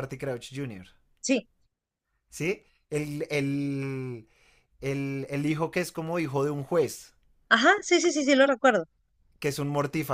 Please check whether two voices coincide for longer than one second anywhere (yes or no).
no